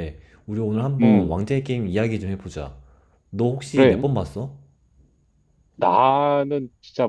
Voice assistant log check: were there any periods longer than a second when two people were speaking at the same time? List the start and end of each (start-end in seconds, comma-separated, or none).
none